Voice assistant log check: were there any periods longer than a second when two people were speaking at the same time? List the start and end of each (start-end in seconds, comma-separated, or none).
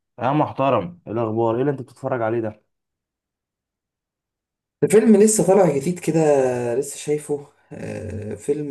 none